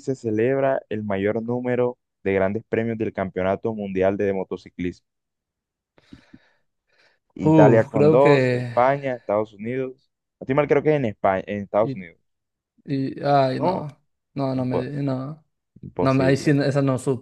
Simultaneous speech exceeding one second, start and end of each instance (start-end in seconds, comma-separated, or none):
7.4-8.7